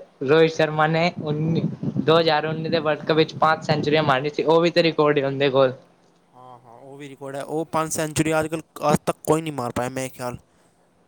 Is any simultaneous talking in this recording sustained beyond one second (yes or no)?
no